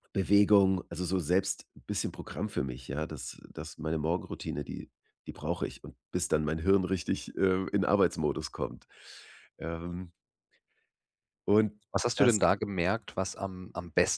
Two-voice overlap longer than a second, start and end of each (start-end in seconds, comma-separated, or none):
none